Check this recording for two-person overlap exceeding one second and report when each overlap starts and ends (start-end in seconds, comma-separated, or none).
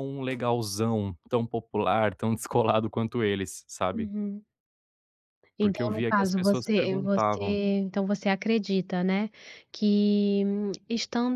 5.6-7.4